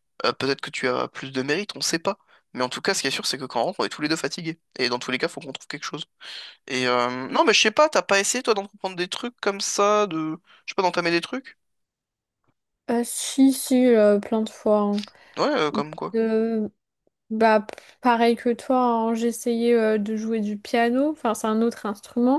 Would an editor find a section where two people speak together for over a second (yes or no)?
no